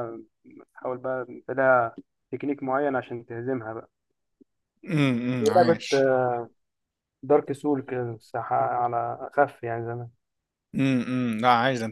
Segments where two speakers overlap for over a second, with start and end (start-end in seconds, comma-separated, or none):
none